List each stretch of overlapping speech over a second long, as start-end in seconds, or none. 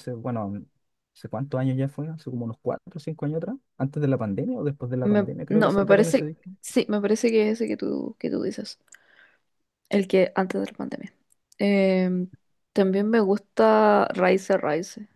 5.0-6.5